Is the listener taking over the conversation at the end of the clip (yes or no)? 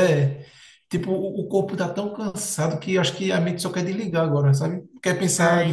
yes